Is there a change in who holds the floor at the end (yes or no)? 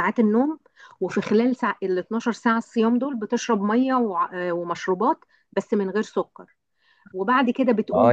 yes